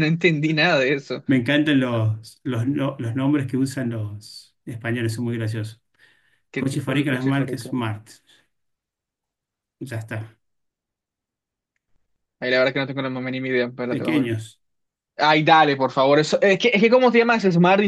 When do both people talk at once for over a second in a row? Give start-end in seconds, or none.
6.5-7.8